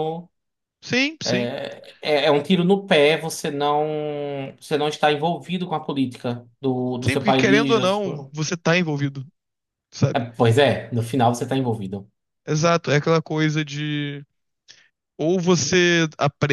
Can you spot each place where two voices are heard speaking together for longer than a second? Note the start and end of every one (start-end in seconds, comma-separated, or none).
7.0-8.3